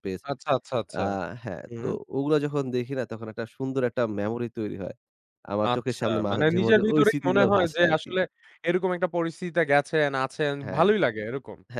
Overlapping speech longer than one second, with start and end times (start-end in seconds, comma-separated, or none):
5.7-8.1